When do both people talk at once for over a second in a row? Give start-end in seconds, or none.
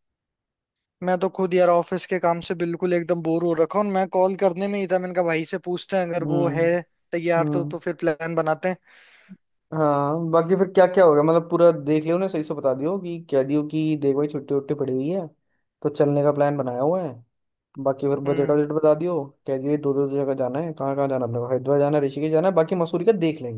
none